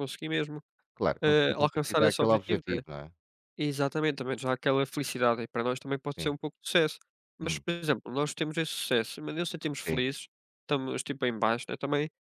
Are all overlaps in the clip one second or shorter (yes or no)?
no